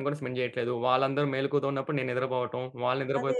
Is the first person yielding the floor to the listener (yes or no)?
no